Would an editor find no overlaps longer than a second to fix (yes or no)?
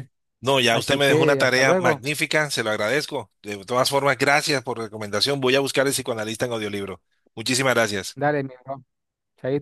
no